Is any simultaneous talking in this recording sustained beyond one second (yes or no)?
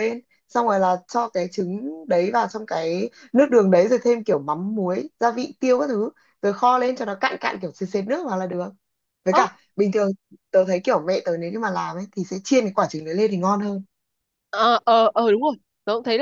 no